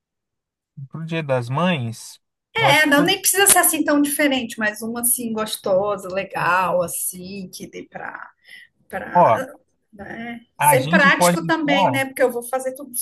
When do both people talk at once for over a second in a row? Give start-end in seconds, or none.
10.6-12.0